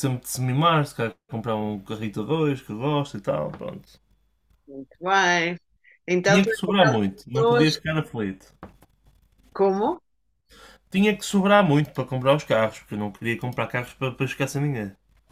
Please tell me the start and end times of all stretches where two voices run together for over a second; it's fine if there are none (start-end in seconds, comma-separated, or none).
6.2-7.7